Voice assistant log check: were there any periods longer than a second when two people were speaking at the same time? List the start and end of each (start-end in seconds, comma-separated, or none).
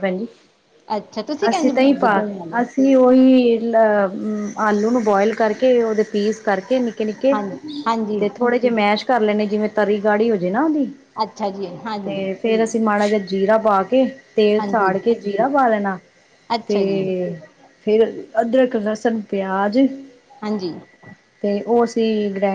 none